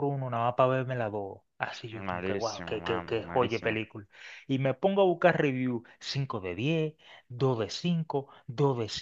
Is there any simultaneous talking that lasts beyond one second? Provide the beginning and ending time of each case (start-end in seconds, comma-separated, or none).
2.1-3.8